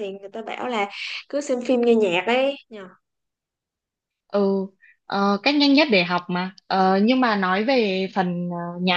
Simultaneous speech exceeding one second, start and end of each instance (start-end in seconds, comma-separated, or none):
none